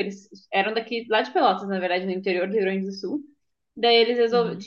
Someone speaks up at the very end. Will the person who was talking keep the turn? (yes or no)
yes